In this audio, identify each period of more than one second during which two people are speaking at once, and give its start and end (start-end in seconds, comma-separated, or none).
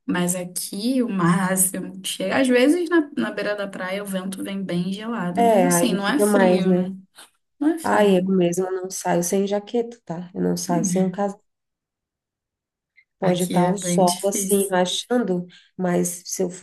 5.3-6.9, 13.2-14.7